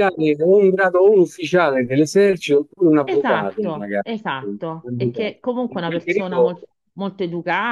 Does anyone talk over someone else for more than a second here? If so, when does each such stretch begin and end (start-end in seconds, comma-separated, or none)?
3.0-6.6